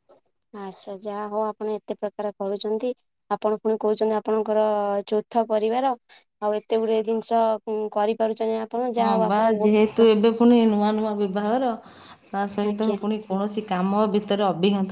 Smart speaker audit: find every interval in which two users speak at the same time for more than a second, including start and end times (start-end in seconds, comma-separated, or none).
none